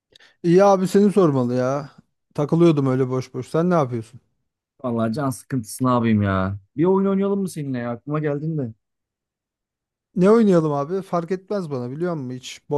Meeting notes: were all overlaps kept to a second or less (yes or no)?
yes